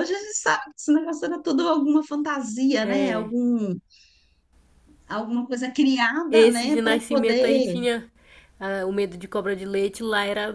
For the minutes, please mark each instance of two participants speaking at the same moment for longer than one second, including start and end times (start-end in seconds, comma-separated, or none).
6.3-7.8